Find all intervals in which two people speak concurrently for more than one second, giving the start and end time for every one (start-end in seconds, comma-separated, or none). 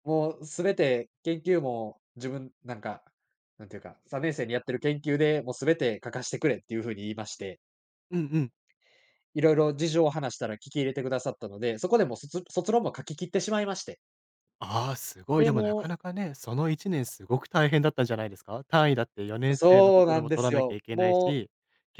19.5-21.4